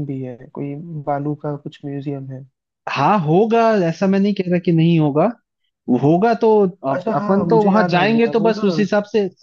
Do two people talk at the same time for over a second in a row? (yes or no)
yes